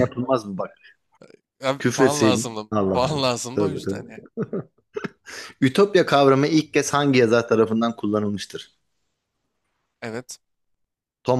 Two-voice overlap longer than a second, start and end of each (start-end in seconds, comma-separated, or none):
1.8-4.2